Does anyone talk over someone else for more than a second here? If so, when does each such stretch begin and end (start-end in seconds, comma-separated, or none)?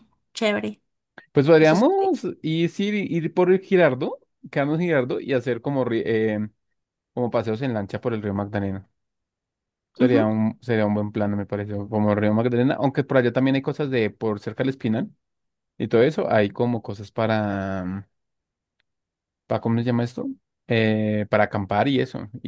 none